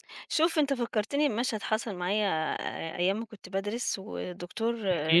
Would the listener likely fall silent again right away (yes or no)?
yes